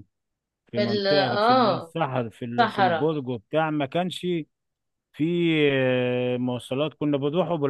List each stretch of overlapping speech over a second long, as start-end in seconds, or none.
0.7-1.9